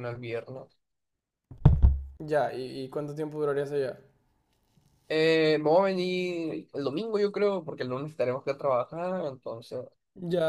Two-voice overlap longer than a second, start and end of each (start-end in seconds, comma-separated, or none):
none